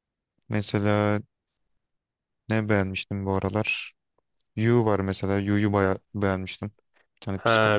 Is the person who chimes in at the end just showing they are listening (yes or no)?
no